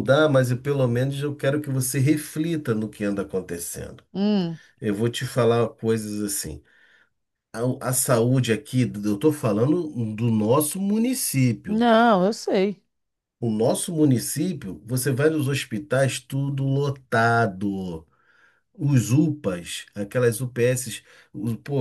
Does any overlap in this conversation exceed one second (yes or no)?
no